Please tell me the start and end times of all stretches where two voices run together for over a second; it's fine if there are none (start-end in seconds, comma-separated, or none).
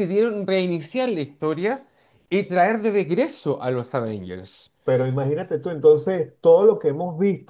none